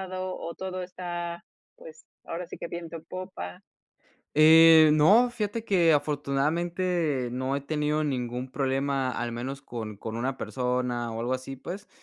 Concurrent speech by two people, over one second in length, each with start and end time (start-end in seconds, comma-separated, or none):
none